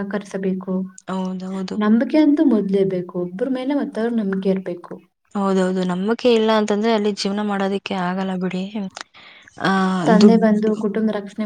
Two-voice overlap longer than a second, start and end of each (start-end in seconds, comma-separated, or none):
none